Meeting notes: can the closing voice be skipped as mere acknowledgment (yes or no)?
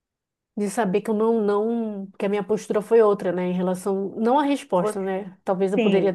yes